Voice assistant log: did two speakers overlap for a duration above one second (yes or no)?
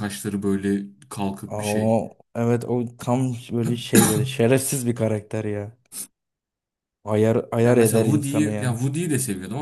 yes